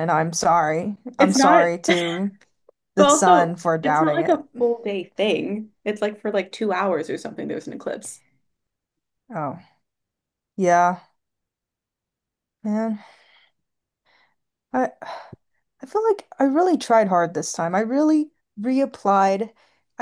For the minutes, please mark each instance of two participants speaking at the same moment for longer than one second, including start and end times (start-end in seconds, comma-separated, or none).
3.0-4.5